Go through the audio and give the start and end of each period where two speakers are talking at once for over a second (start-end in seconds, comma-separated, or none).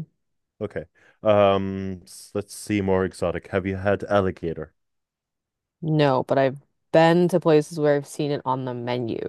none